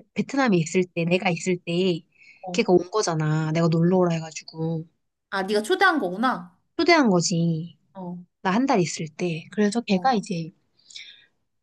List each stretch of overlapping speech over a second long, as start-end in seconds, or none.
none